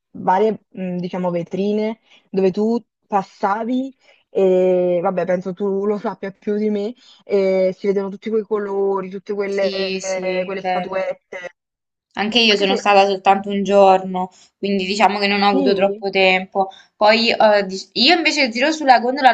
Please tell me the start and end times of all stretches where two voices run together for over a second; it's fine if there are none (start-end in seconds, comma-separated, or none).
9.4-11.0